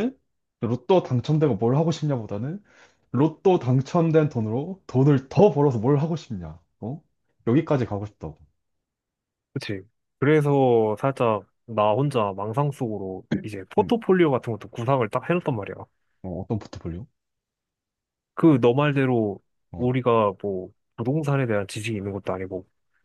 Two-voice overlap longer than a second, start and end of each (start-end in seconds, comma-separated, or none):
none